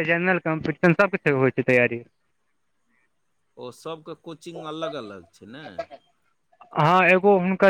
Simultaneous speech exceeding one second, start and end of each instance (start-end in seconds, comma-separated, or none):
none